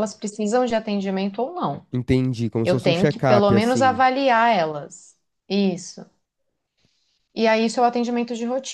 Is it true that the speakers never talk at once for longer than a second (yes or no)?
no